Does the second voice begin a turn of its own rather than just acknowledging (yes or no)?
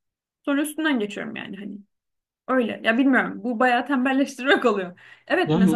no